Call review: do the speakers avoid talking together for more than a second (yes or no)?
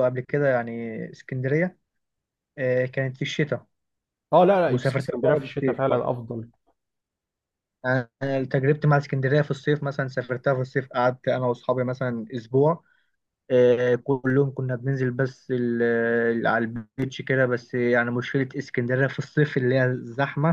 no